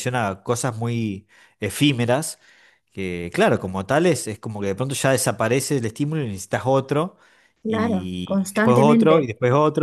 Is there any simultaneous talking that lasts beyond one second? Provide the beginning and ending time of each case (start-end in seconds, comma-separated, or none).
7.7-9.3